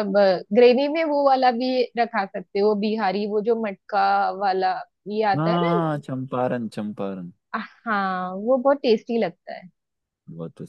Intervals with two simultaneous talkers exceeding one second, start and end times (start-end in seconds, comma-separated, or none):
none